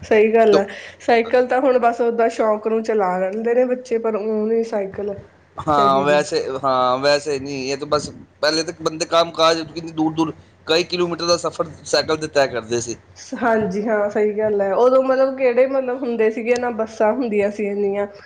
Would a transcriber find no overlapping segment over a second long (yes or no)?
yes